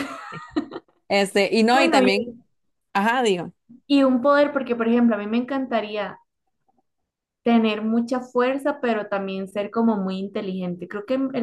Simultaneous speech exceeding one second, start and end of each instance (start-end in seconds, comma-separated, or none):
none